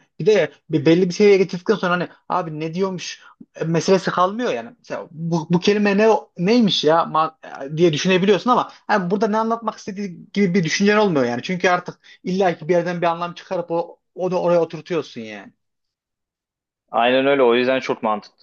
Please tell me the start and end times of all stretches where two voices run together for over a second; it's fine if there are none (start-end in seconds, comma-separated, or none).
none